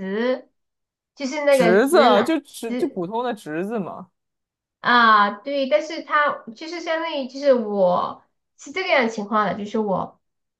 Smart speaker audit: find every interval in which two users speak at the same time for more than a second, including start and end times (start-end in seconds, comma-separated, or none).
1.5-3.1